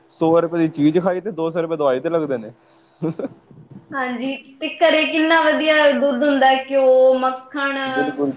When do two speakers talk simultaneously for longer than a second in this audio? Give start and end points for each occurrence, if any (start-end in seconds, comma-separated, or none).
none